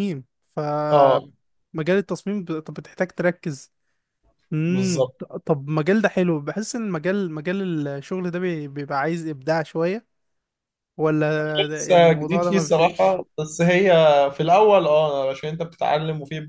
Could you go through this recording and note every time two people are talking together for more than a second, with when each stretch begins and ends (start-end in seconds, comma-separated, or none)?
11.7-13.2